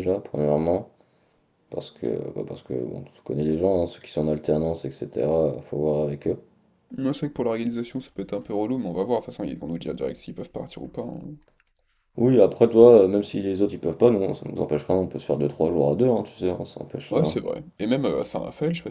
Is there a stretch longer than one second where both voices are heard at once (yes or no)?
no